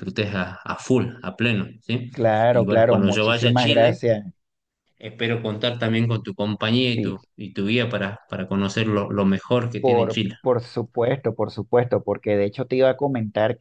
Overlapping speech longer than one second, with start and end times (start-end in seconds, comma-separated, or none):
2.5-4.0